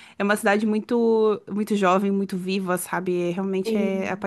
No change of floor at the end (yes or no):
no